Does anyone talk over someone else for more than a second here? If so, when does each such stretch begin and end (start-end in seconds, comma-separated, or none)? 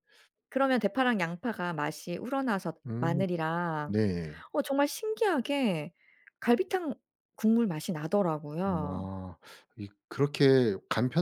none